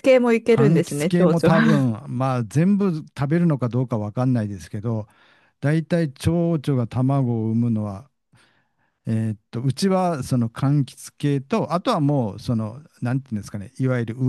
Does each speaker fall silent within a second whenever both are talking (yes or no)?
no